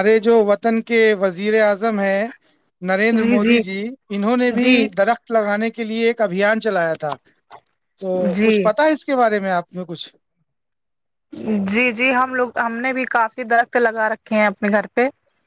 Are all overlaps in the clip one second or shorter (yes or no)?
yes